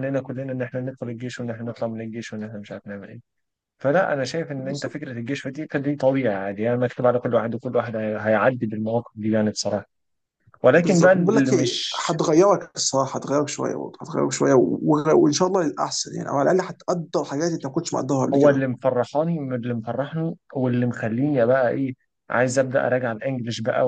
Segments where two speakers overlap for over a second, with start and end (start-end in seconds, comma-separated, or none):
10.8-12.0